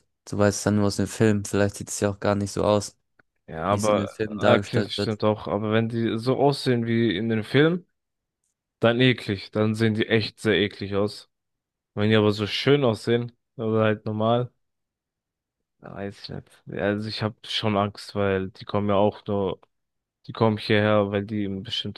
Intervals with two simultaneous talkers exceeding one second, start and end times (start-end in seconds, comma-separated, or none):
3.7-5.2